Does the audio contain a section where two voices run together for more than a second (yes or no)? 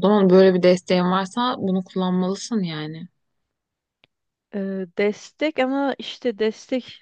no